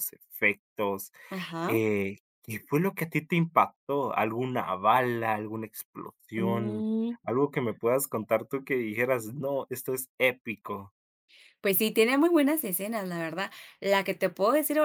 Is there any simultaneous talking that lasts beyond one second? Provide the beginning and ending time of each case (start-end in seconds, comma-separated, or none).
none